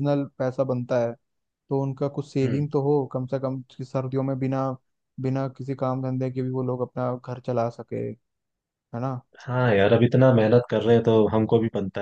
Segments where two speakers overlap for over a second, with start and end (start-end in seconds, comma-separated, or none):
none